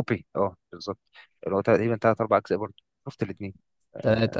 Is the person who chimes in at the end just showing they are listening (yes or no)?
no